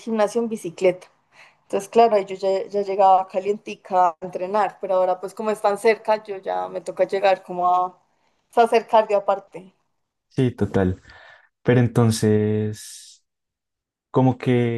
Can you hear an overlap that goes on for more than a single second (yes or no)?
no